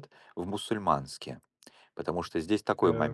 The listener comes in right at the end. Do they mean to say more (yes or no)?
no